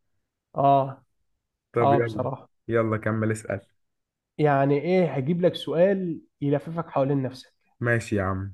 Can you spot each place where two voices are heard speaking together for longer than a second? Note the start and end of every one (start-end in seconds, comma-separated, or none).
none